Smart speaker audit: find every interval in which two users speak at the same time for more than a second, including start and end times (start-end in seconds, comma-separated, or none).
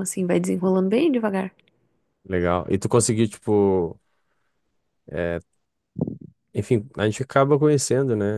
none